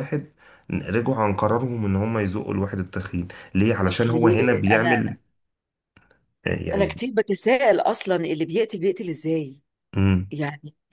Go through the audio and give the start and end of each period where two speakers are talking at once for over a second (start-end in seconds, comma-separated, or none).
3.9-5.2